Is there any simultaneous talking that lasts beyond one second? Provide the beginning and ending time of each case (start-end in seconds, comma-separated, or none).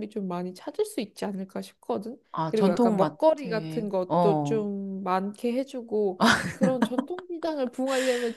2.3-4.6